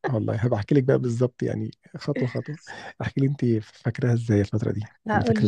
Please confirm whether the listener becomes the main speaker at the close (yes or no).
yes